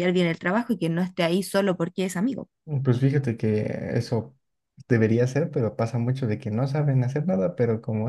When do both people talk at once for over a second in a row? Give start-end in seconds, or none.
none